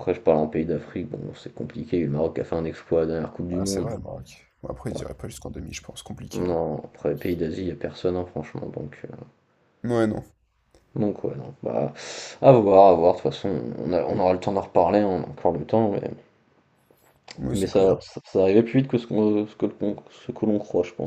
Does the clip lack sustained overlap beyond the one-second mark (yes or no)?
yes